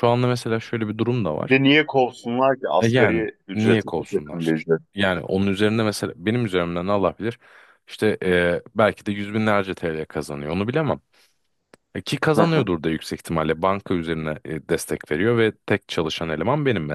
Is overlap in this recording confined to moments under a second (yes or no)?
no